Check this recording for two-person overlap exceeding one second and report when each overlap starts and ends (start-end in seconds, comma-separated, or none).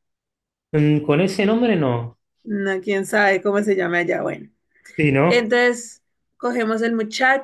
none